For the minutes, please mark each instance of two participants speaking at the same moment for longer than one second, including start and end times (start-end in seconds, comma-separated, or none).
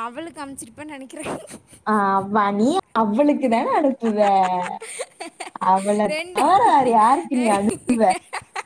none